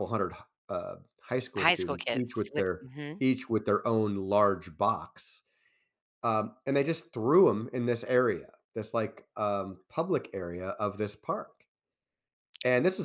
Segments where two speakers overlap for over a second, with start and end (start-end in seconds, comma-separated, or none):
1.6-2.8